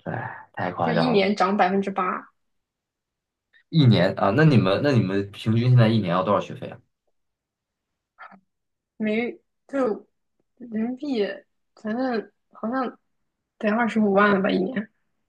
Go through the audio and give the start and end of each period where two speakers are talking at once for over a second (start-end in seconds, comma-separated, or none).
none